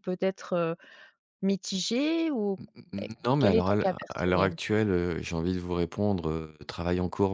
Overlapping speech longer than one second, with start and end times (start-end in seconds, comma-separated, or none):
3.2-4.6